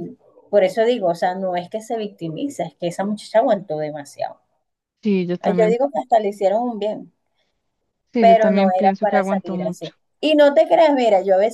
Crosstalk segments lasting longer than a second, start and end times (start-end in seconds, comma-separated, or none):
8.2-9.9